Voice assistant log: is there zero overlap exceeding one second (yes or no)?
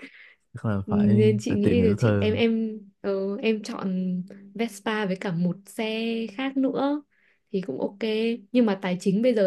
no